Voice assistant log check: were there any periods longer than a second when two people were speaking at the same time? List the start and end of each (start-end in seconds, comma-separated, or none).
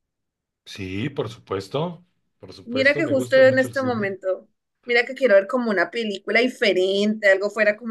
2.6-4.2